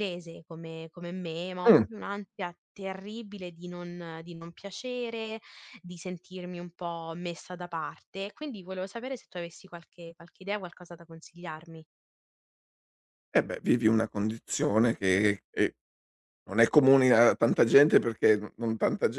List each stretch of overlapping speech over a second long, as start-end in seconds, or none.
none